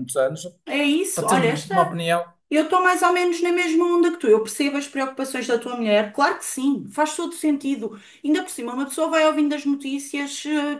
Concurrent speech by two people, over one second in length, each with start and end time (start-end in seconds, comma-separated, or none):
none